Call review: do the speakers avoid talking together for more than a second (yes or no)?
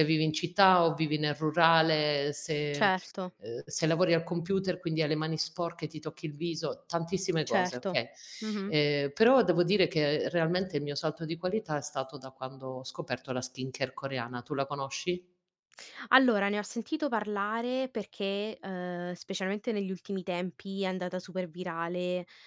yes